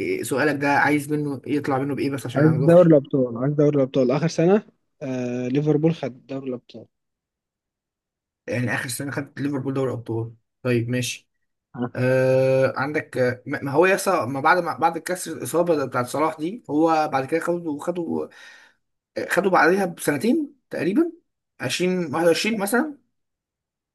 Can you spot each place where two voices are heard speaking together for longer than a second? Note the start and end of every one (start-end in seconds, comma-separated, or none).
none